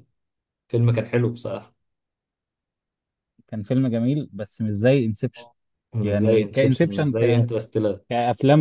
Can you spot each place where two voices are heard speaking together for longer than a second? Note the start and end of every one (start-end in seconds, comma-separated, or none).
6.0-7.5